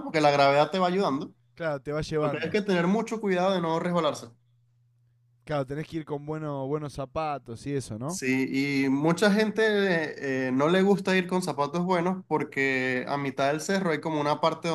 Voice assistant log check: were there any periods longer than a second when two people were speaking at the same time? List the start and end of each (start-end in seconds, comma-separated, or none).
none